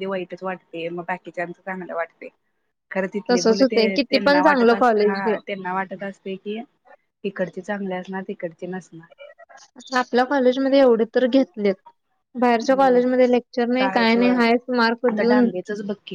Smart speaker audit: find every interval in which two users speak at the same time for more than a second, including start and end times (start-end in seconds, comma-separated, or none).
3.3-5.3